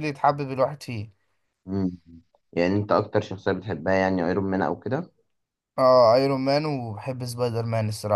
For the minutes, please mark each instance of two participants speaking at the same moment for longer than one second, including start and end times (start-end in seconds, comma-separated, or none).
none